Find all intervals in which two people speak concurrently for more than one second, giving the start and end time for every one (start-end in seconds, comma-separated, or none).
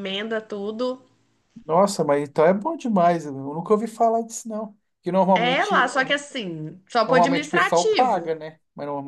7.1-8.3